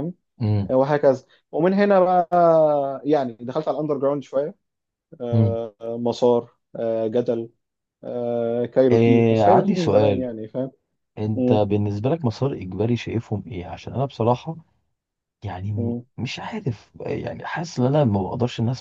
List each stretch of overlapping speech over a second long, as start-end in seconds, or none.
8.9-10.3